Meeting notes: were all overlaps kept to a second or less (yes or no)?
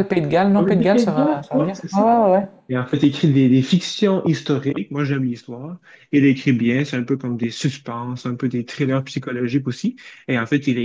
no